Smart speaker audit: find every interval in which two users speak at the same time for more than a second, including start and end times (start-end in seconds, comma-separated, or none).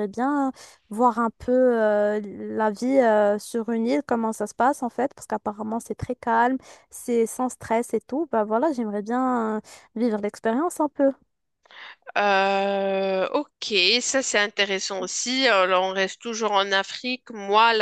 none